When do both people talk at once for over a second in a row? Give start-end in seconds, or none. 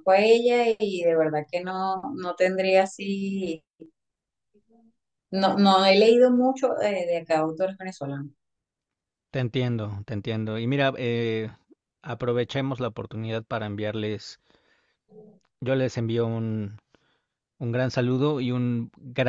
none